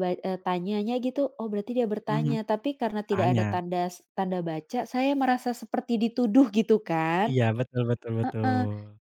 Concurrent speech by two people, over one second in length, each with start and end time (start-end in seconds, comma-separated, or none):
none